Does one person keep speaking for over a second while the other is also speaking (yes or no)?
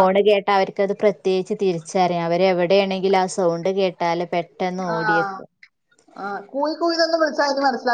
no